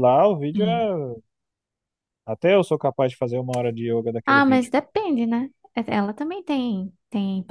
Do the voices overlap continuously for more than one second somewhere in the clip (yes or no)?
no